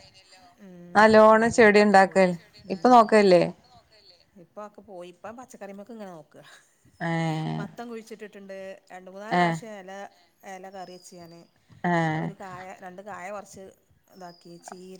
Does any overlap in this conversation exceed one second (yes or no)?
yes